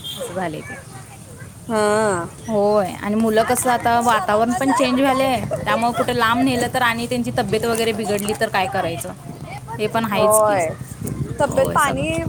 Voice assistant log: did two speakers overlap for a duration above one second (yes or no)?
yes